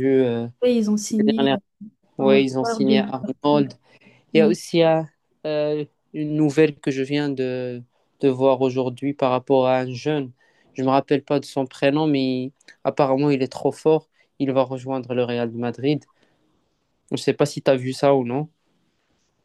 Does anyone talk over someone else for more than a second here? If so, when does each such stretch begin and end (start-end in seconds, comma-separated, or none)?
2.2-3.6